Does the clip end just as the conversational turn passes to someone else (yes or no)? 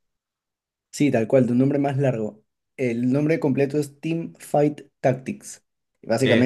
no